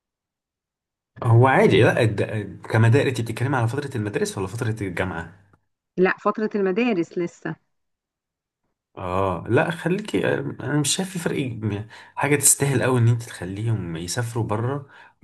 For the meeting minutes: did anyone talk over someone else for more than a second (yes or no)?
no